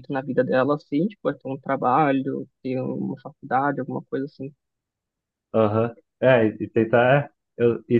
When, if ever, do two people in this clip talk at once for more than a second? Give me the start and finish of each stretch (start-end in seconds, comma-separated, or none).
none